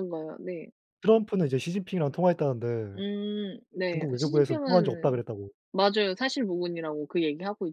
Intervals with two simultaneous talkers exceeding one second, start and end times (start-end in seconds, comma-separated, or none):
3.9-5.2